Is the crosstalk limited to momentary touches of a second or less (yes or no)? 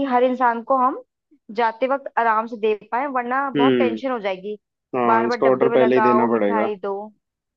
no